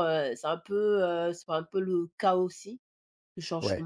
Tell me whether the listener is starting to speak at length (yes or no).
no